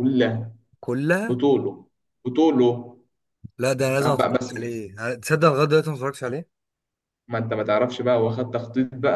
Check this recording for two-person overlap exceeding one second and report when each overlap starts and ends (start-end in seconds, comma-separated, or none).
none